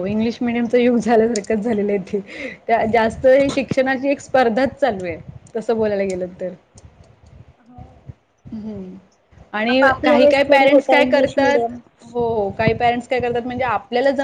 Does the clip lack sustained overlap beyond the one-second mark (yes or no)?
no